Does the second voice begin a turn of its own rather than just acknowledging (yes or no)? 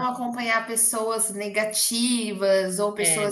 no